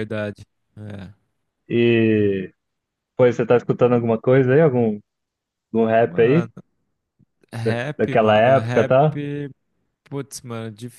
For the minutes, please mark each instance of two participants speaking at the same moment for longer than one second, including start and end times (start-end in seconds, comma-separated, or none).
7.6-9.0